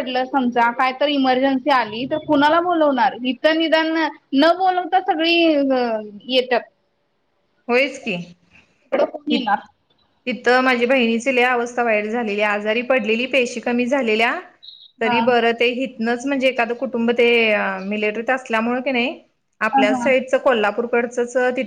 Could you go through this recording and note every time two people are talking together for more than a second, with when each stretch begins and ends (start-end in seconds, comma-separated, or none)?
none